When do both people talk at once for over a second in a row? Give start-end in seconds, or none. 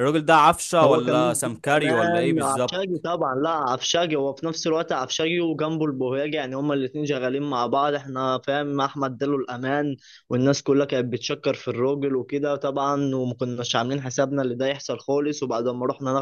0.8-3.0